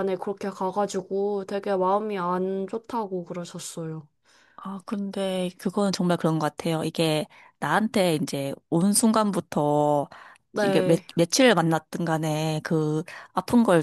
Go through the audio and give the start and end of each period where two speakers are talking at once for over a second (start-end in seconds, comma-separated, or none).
none